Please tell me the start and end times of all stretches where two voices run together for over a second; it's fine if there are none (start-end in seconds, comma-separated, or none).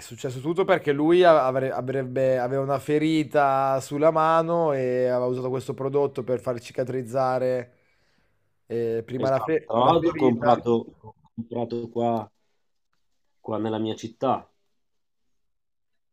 9.2-10.6